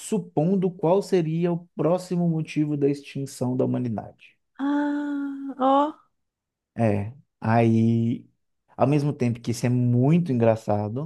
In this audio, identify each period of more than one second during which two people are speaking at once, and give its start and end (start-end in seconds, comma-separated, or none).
none